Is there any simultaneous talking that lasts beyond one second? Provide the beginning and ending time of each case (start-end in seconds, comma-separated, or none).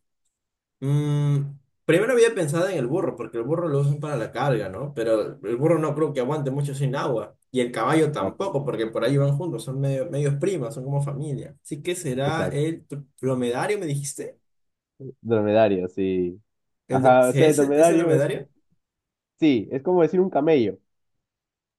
16.9-18.3